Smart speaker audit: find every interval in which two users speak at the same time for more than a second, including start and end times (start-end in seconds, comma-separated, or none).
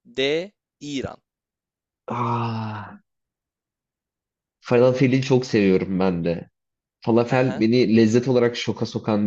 none